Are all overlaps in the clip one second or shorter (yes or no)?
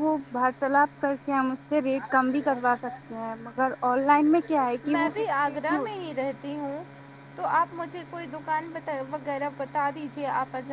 no